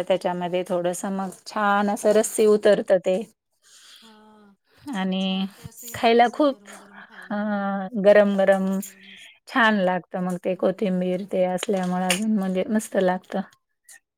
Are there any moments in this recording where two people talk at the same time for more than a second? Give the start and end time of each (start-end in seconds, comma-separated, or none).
none